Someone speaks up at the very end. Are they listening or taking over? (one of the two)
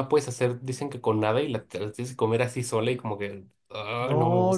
taking over